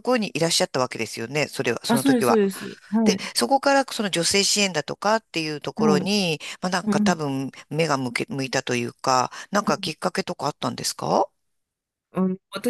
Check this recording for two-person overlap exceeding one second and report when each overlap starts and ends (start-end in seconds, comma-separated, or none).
none